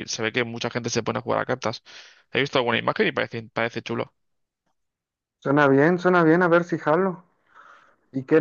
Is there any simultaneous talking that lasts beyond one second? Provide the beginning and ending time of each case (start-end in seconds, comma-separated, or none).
none